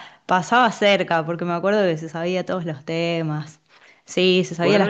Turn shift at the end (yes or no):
yes